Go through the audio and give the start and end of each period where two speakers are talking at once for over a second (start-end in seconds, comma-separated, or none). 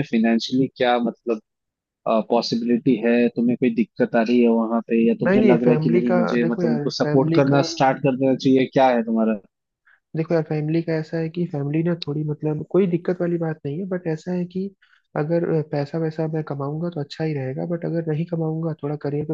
5.2-7.6